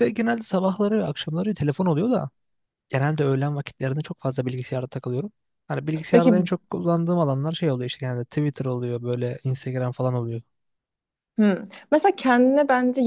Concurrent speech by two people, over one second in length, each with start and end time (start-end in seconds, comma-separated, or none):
none